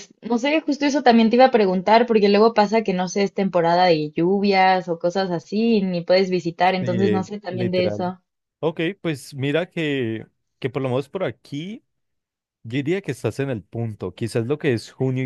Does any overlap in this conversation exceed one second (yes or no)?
yes